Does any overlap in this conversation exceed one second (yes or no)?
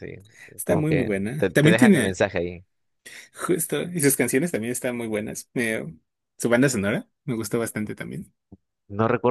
yes